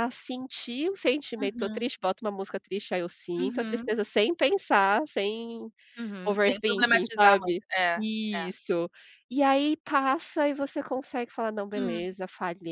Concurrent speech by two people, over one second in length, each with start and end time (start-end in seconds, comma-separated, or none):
6.2-8.5